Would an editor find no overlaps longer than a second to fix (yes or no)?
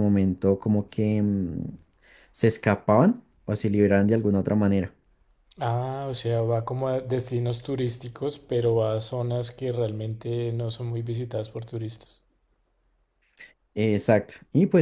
yes